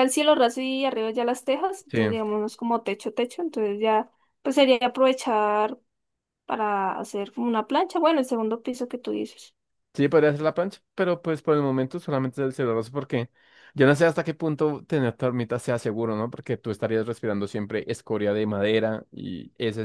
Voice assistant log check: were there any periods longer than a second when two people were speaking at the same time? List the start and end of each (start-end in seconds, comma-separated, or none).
none